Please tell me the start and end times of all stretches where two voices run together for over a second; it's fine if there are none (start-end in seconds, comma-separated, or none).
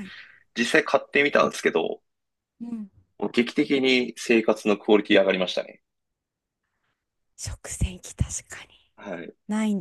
none